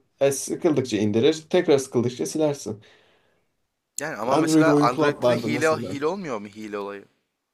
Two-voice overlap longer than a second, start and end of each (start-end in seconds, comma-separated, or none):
4.3-6.0